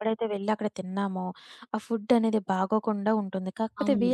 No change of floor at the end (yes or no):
yes